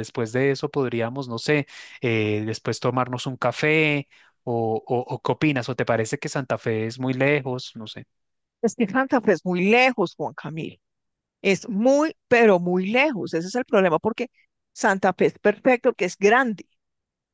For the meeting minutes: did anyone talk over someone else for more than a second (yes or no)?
no